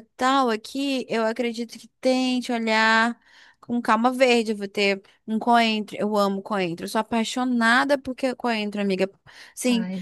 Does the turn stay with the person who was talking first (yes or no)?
yes